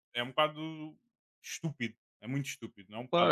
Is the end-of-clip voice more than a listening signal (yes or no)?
yes